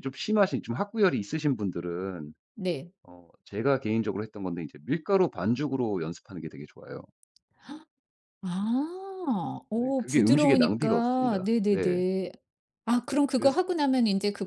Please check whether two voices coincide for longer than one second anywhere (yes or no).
yes